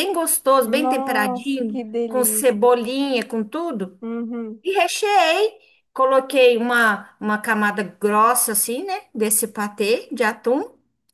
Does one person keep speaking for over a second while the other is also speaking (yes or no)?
yes